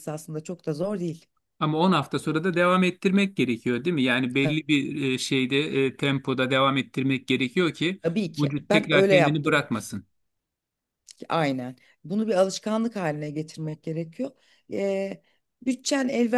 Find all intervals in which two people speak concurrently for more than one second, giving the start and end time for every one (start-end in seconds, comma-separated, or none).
8.4-9.7